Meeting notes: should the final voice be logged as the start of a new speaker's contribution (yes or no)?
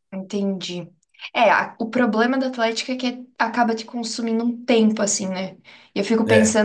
no